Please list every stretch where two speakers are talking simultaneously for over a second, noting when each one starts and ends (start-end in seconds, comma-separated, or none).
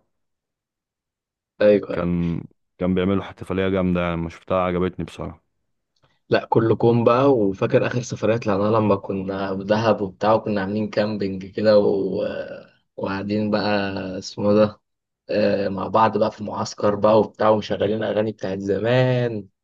none